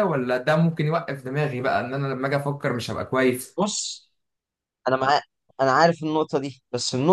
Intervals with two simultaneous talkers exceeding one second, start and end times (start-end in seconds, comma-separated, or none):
none